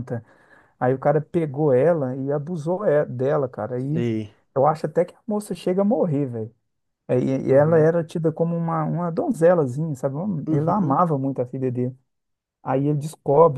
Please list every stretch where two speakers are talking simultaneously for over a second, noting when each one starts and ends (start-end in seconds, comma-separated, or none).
none